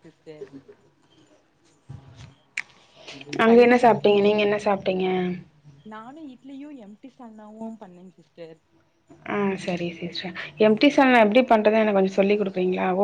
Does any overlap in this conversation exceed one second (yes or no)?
no